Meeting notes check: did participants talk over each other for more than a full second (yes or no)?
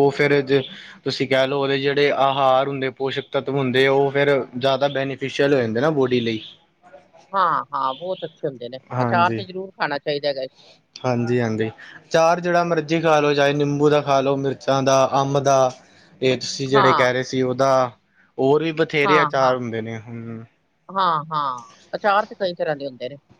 no